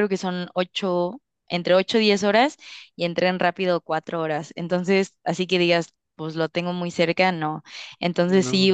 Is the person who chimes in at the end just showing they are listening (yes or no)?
yes